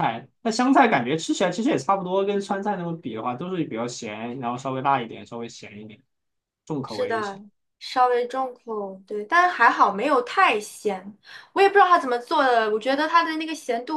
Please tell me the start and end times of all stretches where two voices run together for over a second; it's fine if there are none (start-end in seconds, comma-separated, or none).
none